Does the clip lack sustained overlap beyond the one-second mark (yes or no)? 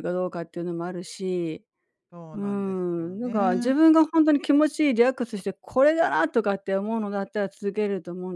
no